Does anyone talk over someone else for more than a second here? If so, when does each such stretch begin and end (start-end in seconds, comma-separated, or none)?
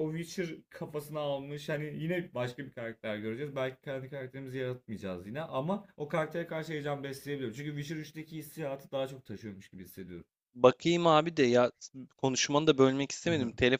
none